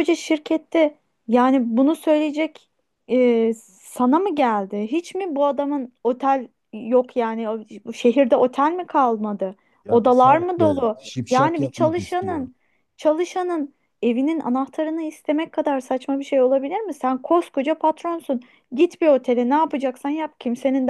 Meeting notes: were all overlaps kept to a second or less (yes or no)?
no